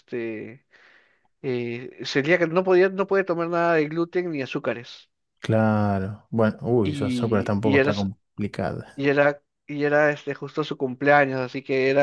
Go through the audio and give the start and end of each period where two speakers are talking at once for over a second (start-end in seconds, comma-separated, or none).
6.8-8.1